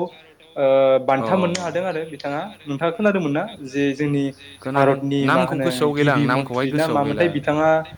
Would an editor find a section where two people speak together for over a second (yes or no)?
yes